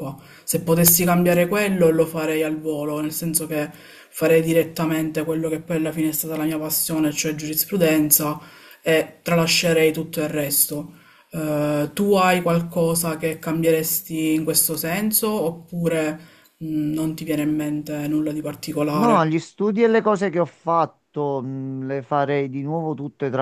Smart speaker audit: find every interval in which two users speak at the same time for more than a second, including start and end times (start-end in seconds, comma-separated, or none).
none